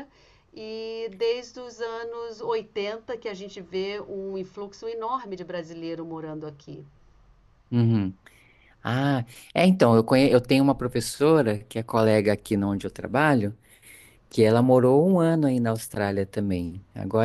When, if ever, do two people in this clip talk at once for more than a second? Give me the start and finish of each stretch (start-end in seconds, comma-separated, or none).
none